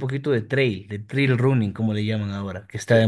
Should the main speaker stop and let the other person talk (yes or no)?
yes